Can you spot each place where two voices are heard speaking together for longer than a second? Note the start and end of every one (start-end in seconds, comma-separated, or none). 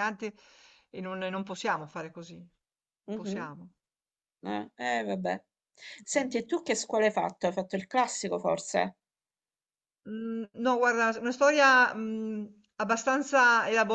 none